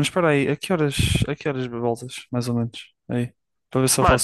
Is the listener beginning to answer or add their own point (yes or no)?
no